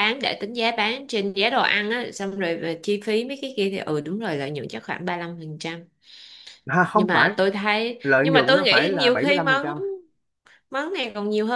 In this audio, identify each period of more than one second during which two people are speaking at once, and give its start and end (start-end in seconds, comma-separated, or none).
8.0-9.6